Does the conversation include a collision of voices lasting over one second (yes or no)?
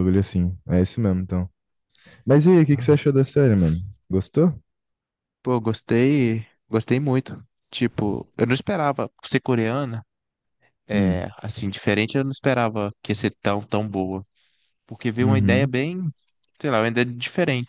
no